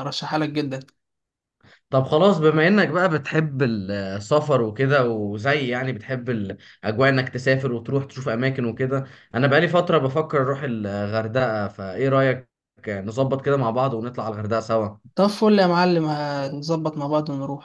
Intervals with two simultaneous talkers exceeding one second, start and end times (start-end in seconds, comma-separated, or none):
none